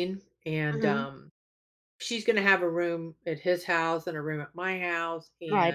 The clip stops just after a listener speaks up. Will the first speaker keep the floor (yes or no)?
no